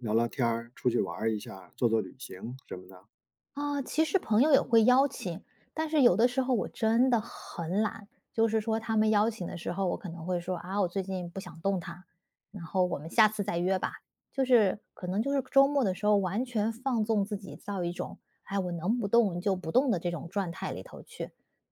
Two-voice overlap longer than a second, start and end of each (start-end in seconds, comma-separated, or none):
none